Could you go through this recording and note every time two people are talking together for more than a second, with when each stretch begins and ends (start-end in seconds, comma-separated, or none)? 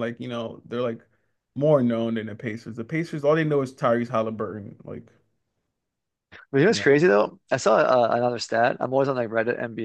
none